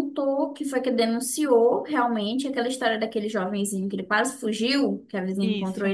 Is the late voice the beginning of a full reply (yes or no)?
no